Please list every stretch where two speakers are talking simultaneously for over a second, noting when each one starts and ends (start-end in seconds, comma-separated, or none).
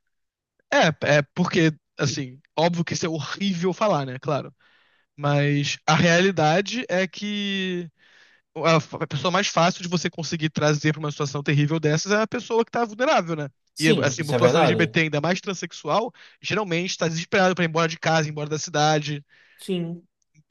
13.7-15.0